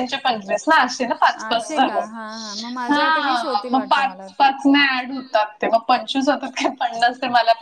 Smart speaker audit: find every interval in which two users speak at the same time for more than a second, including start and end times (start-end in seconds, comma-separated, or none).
2.9-4.5